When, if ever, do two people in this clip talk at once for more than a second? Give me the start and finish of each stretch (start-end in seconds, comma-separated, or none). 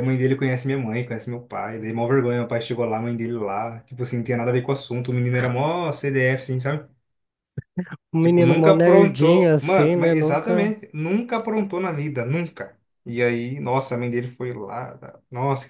8.2-10.7